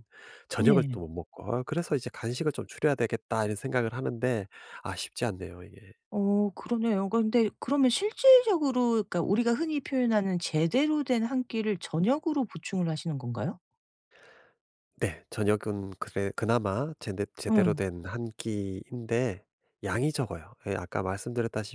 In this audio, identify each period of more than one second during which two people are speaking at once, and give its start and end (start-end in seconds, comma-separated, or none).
none